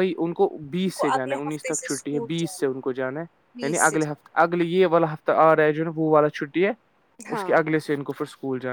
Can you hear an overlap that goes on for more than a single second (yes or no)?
yes